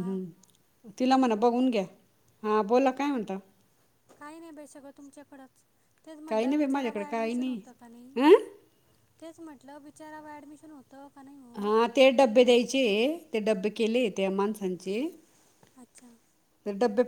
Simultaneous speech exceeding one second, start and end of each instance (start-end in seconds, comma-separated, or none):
6.3-7.6